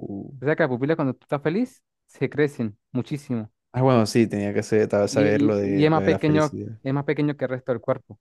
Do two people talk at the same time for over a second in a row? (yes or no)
yes